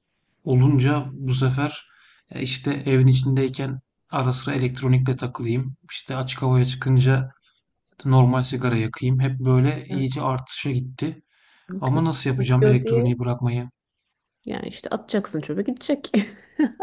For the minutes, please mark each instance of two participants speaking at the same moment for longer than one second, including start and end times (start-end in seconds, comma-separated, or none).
11.8-13.2